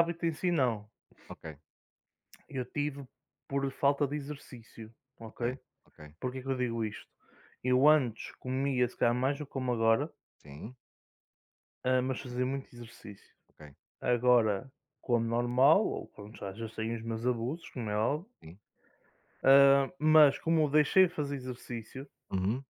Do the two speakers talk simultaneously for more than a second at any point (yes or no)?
no